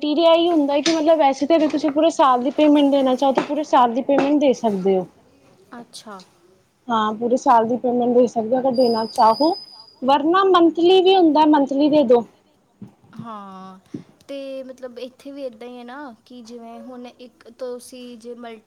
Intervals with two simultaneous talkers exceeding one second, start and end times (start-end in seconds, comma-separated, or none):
none